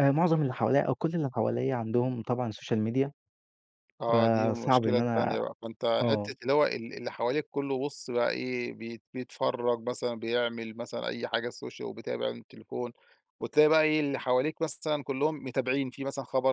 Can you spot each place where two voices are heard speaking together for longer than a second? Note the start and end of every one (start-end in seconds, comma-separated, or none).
4.1-5.4